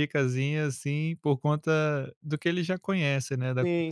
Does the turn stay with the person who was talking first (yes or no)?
no